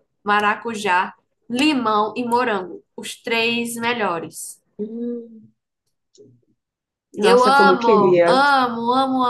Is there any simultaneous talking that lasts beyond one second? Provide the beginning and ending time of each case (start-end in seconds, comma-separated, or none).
7.2-8.4